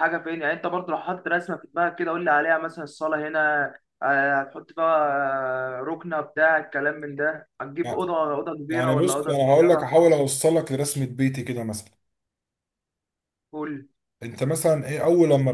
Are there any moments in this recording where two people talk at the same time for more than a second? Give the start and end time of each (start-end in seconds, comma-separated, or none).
8.7-10.0